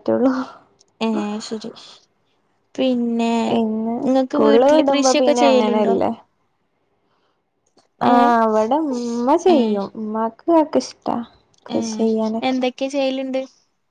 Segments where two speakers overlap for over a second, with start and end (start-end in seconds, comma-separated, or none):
4.0-6.0